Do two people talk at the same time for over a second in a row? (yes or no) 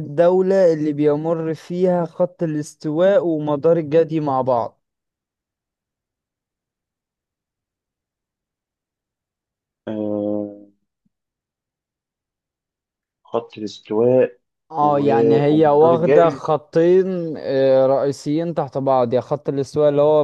yes